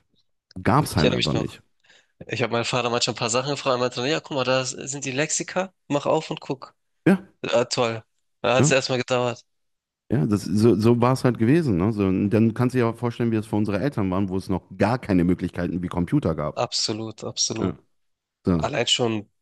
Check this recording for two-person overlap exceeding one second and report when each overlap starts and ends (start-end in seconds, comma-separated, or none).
none